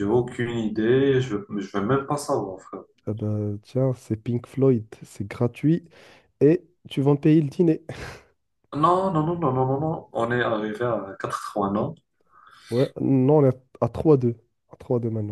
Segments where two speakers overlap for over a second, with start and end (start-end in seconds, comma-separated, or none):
none